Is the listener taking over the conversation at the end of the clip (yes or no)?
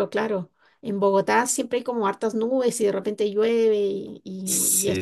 yes